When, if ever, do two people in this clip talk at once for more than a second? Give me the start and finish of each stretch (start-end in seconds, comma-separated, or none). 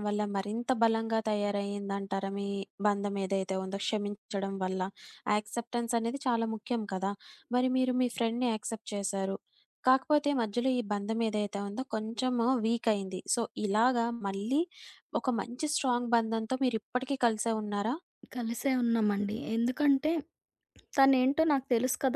none